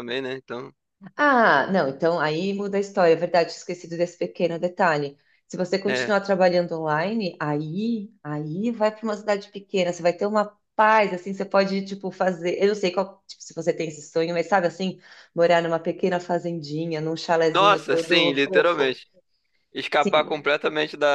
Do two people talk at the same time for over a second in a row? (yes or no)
yes